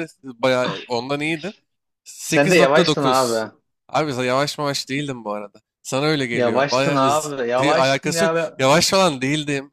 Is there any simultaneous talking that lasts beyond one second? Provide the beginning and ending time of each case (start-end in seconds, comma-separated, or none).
2.3-3.5, 6.3-8.6